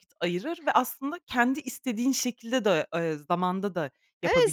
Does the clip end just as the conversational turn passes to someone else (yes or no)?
yes